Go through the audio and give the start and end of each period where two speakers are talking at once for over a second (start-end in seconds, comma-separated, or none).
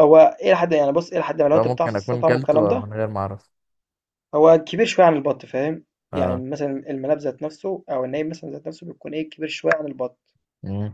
1.6-2.9